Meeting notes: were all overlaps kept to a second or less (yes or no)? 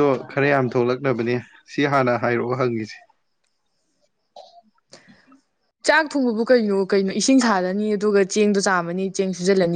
yes